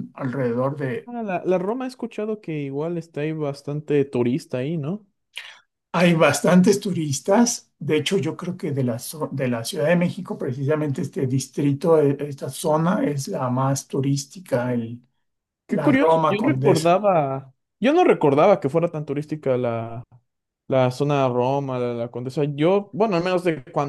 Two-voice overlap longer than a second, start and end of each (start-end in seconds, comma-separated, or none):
15.7-16.9